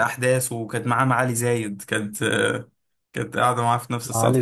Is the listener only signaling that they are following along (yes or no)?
yes